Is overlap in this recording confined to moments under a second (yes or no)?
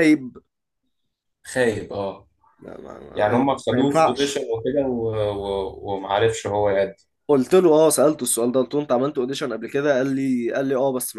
no